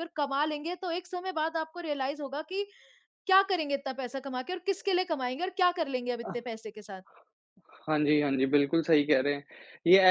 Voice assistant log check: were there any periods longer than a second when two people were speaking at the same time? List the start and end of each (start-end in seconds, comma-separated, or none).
none